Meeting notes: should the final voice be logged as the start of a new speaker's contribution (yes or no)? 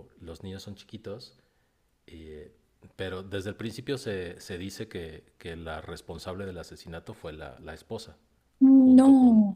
no